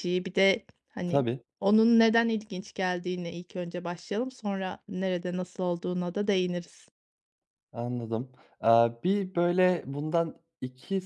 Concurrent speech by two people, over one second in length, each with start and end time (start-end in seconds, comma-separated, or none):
none